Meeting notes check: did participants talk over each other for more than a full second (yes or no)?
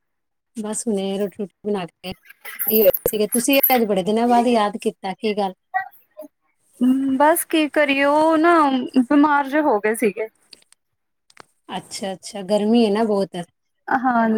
no